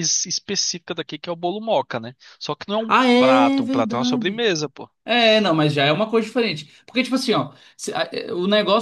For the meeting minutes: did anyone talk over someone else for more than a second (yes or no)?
yes